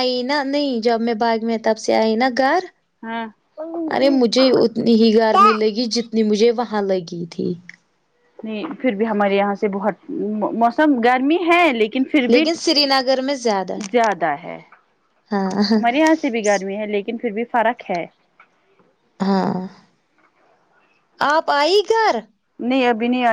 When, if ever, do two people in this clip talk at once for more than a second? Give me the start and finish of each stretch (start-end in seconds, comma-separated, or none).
none